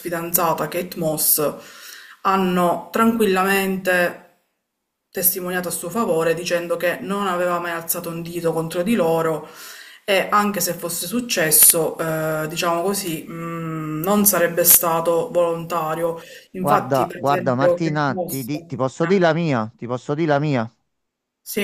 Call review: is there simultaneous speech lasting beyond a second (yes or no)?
yes